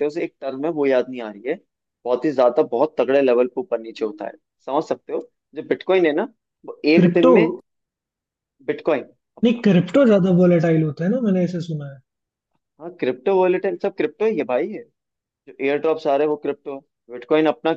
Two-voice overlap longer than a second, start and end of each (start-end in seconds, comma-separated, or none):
none